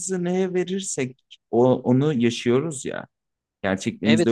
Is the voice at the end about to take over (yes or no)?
yes